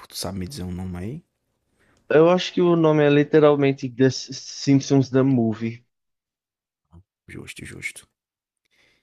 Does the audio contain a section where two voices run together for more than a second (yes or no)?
no